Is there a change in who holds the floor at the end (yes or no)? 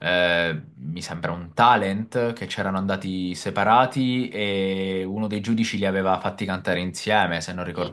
yes